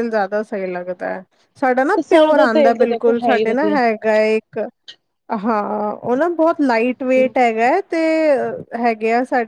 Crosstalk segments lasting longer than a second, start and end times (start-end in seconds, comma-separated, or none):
1.9-3.8